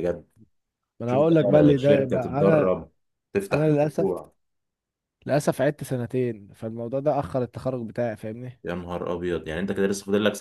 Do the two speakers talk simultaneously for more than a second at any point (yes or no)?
yes